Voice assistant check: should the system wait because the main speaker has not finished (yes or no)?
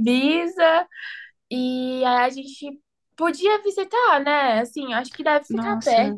no